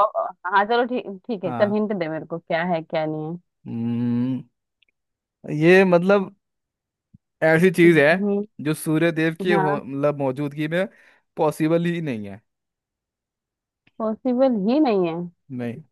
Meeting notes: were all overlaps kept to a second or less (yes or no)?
yes